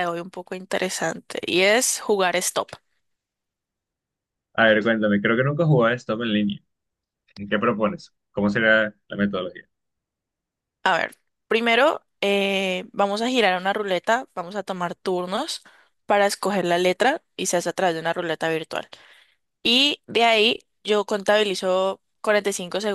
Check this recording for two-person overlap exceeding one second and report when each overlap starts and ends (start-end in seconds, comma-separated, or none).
none